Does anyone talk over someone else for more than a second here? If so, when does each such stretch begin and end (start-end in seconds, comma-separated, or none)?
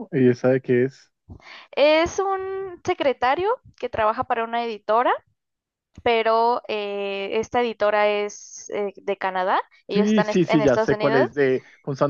9.9-11.3